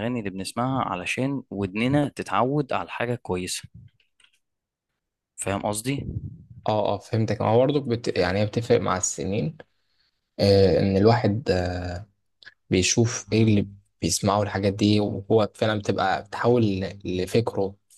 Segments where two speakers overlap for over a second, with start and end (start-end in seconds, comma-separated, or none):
none